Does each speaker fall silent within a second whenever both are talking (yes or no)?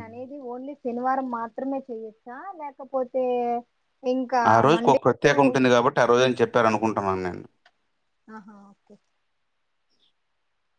yes